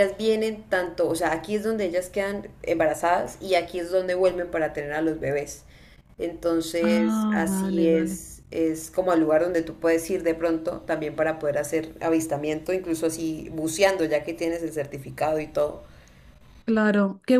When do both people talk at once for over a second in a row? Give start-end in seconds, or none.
6.8-8.2